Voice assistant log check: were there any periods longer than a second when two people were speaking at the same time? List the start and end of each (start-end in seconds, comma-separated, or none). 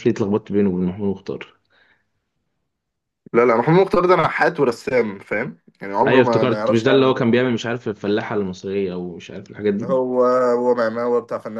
6.1-7.3